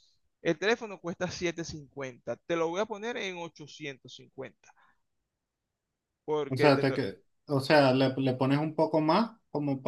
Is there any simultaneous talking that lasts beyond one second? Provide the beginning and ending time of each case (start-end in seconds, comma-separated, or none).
none